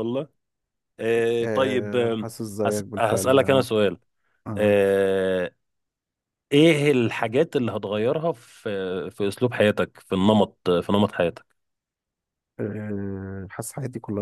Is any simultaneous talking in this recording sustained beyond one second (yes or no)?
yes